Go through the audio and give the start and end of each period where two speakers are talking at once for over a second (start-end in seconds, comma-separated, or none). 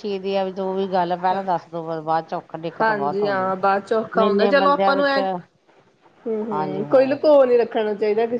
2.8-5.2